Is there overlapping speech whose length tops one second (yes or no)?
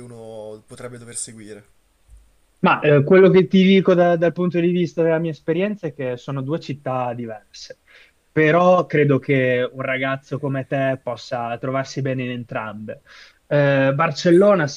no